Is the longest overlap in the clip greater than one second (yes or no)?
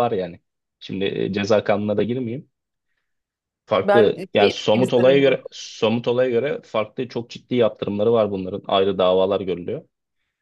yes